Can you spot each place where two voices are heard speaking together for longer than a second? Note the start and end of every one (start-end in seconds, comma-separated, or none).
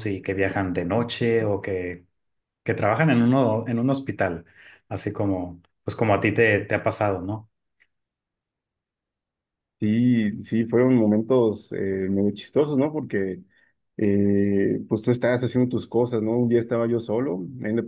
none